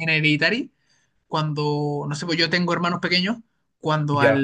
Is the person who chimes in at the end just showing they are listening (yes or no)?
yes